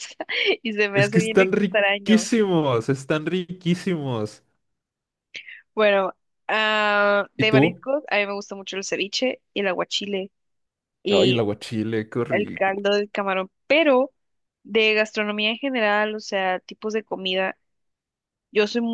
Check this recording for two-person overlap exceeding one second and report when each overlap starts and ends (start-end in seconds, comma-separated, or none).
0.9-2.2